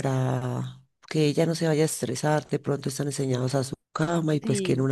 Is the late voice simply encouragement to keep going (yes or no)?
yes